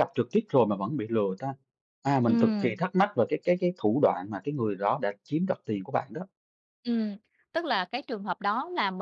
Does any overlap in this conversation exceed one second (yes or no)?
no